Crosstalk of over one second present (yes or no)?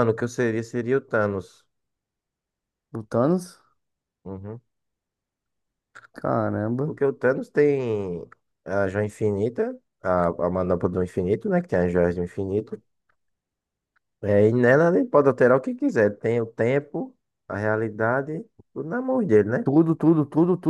no